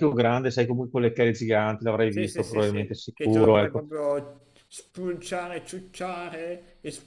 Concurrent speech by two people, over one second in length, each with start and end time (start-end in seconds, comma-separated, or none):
2.1-3.9